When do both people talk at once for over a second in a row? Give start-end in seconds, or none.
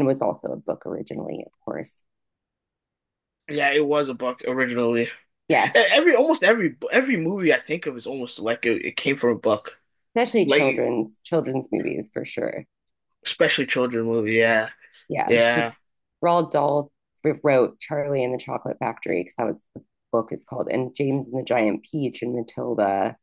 none